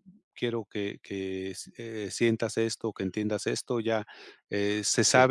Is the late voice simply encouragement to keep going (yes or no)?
yes